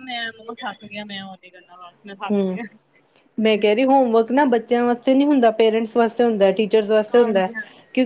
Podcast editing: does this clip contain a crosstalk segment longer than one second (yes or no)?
no